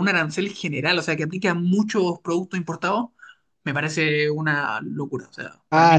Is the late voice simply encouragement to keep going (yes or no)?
no